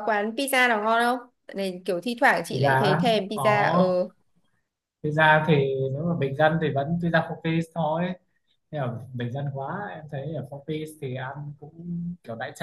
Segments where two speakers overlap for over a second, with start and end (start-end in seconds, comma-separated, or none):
2.5-4.0